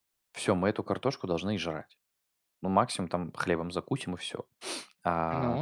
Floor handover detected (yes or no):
no